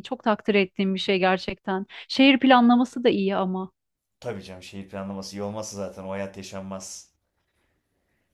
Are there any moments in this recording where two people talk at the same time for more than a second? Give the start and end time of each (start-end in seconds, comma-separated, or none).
none